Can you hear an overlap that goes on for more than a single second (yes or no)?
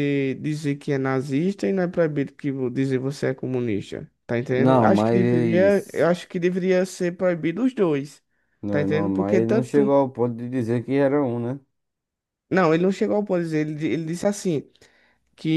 yes